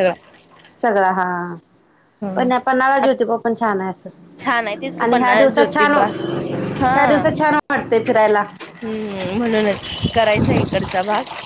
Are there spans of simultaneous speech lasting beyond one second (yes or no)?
yes